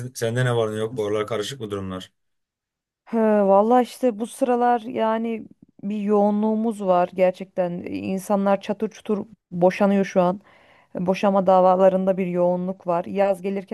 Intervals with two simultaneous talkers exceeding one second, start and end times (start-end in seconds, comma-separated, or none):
none